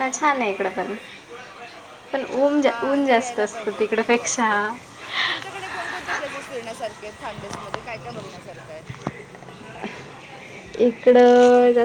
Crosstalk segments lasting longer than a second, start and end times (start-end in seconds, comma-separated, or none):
2.6-4.5